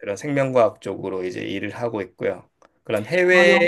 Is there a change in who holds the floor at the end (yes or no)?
no